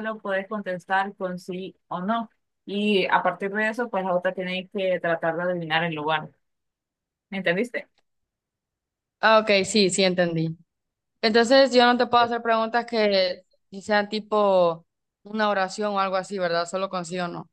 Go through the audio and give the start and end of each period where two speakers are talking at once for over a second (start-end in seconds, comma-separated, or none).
none